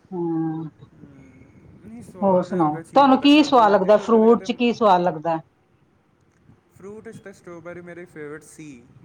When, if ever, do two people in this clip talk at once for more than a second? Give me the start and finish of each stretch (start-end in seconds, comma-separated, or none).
2.2-4.5